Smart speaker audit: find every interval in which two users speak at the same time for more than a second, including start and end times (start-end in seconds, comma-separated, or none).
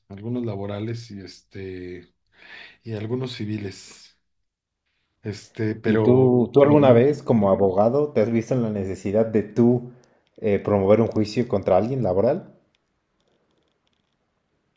5.9-7.1